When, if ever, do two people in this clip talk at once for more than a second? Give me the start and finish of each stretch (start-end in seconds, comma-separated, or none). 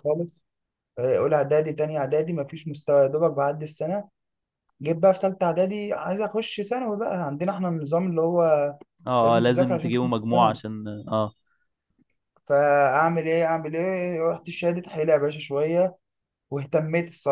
9.2-10.6